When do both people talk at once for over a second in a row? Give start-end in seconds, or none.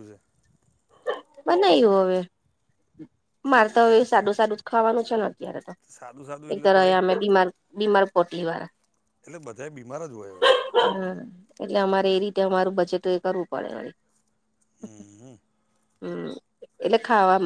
none